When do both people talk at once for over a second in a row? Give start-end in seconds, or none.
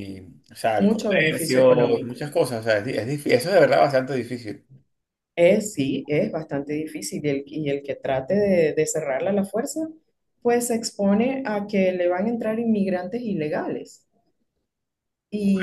0.8-2.2